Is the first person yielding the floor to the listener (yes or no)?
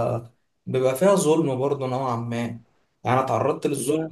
no